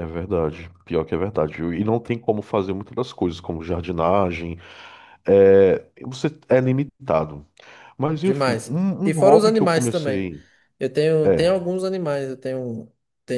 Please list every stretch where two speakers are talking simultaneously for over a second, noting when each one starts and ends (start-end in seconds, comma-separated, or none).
8.2-10.3